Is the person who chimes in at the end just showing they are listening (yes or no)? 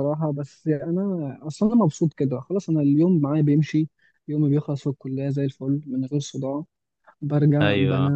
yes